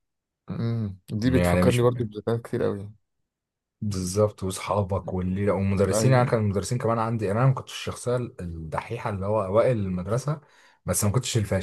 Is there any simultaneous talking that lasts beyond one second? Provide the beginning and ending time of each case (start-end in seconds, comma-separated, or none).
none